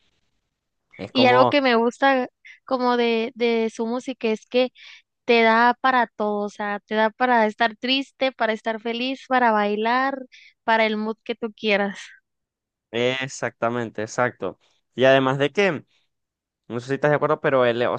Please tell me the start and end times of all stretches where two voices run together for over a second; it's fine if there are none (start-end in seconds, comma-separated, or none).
none